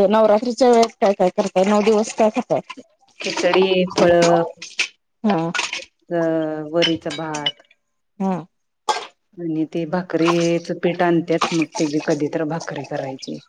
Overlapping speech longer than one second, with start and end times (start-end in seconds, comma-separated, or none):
none